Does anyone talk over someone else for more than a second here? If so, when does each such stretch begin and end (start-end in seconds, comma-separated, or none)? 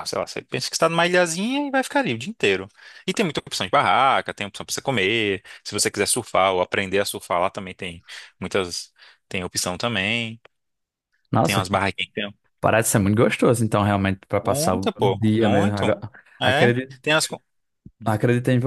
14.4-15.8